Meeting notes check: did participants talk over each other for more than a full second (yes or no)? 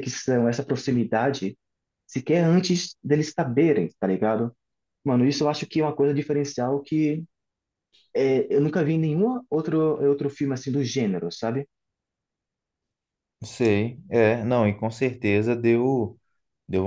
no